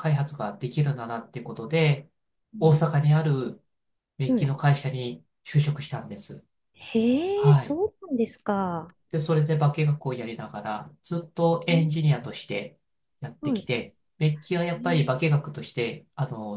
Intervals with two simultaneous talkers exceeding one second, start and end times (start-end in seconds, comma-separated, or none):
none